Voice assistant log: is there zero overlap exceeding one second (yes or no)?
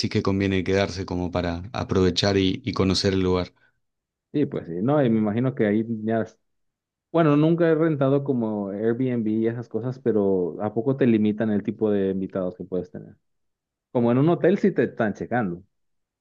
yes